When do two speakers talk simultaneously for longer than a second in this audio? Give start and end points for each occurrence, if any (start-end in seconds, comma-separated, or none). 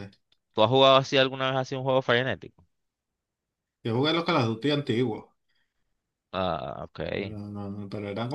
none